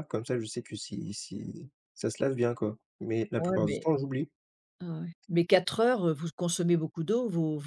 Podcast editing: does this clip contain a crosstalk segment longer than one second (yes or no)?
no